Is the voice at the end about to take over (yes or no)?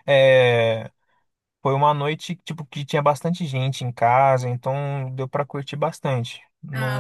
yes